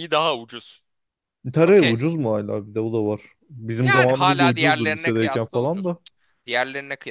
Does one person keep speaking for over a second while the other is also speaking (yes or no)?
yes